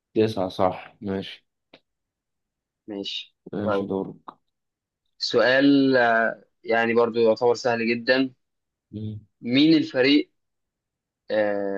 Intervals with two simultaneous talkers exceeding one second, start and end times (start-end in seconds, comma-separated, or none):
none